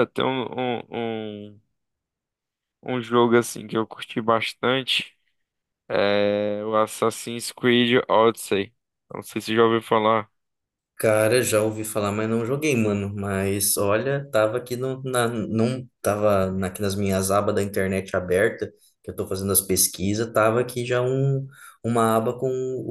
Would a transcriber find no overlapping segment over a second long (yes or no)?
yes